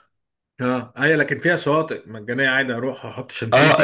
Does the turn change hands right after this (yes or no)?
yes